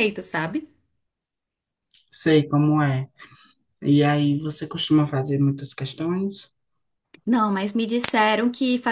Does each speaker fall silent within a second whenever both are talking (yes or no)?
yes